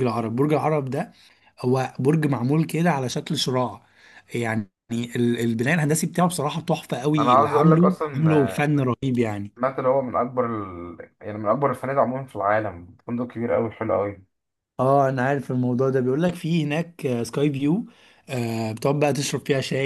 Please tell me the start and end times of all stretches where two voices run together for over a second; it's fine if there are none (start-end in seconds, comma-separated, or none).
7.2-8.7